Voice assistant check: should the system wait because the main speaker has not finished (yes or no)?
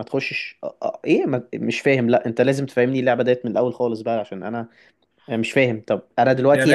no